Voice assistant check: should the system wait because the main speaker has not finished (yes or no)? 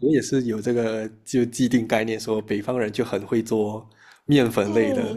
no